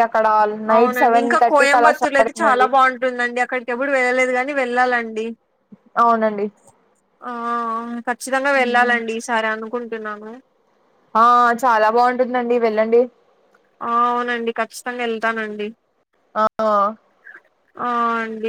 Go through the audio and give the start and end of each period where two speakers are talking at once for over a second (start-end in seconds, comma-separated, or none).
0.8-2.7